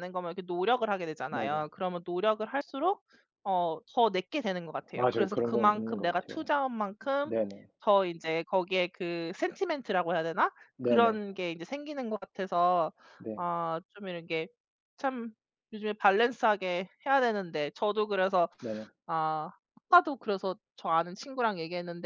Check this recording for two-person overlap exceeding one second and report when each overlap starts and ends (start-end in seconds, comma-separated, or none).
4.9-6.5